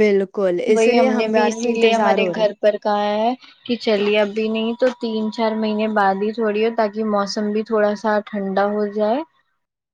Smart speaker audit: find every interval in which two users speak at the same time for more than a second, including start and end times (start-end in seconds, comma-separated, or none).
0.7-2.4